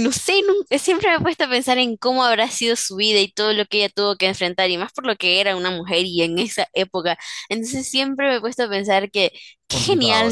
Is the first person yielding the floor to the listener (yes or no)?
no